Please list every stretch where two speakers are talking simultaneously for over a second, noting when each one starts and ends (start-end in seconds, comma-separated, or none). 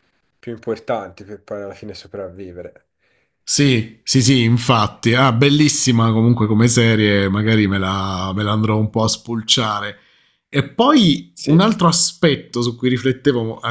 none